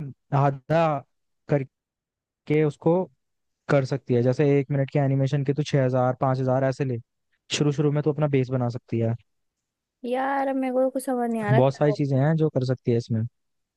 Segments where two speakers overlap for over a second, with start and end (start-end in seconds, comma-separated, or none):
none